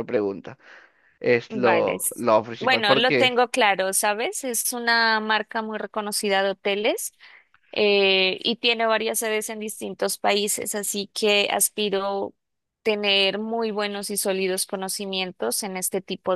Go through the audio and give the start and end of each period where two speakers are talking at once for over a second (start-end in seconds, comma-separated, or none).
1.5-3.3